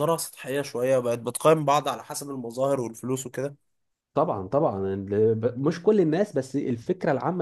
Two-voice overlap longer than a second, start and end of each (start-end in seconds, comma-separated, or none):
none